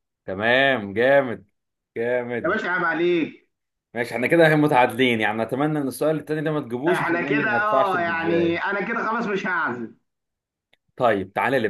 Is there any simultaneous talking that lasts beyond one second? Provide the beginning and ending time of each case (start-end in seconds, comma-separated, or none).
6.9-8.7